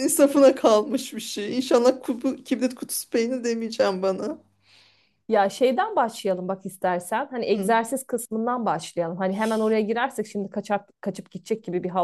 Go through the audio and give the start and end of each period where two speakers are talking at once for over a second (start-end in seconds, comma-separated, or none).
none